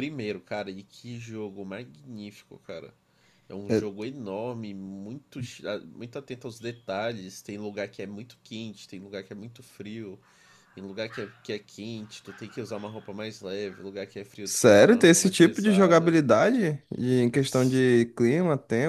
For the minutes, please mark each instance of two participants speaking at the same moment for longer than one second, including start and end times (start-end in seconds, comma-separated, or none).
14.4-16.2